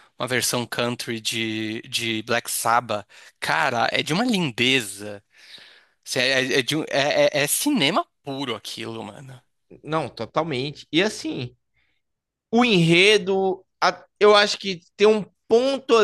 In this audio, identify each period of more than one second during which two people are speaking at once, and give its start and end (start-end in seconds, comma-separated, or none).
none